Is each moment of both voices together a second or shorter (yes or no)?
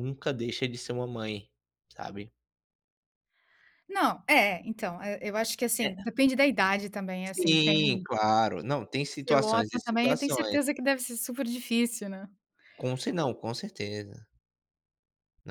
no